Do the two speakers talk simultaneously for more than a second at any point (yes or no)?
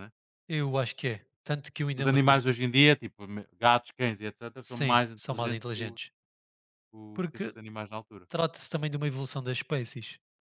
yes